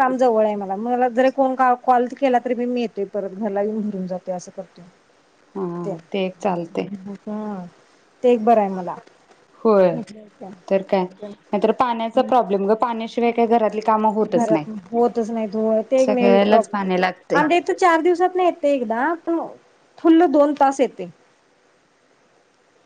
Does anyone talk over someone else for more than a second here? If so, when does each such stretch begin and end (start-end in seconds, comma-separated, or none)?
16.1-17.4